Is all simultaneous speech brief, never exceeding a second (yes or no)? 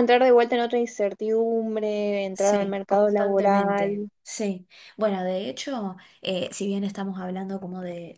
no